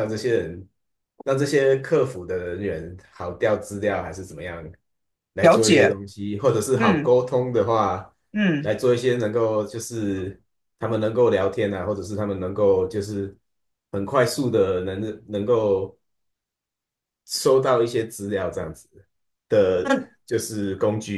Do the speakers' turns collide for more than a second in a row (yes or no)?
no